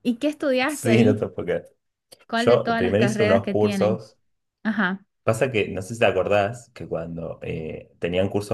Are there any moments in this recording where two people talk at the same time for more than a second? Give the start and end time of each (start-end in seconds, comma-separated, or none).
2.4-4.0